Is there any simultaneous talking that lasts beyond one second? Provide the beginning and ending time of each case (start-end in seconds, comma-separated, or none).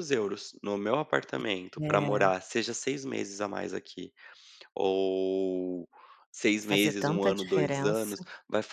6.6-8.1